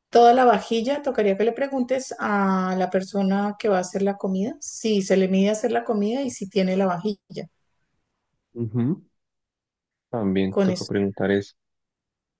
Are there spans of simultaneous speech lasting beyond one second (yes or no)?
no